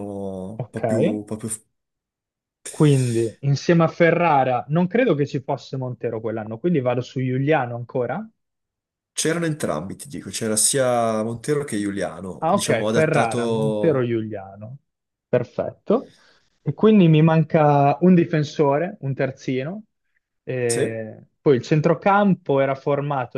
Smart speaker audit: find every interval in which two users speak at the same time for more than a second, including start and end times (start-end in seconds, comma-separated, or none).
12.4-14.1